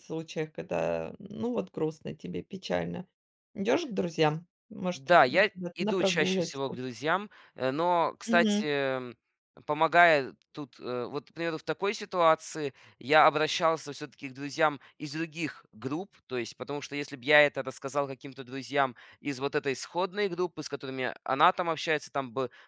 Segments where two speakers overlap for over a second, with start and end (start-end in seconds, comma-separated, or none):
4.9-6.8